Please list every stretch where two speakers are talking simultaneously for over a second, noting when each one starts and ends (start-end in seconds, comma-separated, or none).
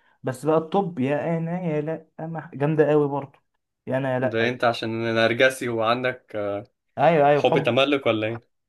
none